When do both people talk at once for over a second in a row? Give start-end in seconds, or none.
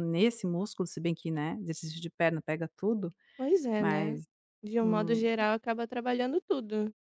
none